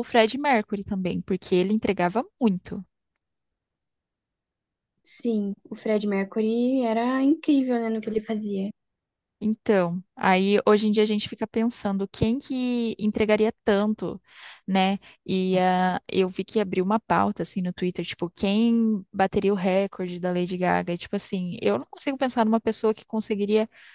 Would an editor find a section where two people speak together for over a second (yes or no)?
no